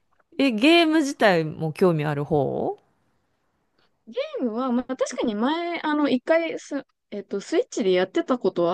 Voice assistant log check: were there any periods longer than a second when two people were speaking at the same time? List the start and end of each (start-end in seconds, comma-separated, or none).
none